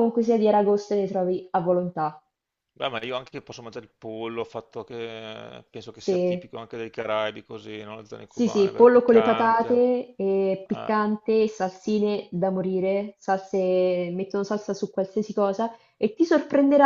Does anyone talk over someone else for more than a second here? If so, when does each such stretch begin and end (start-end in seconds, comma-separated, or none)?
8.3-9.8